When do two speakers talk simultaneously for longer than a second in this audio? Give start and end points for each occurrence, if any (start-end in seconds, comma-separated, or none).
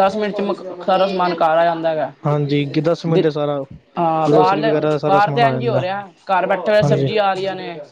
4.3-5.8